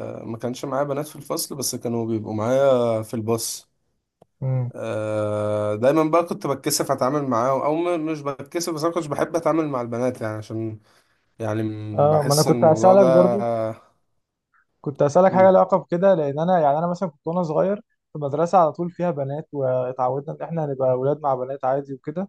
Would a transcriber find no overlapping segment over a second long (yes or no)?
no